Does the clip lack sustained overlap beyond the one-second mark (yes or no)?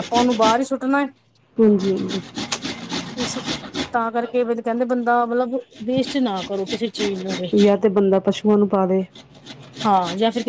yes